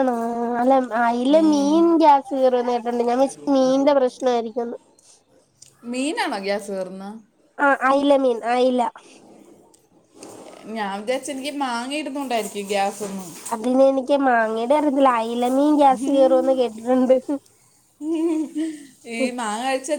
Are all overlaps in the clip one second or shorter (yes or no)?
yes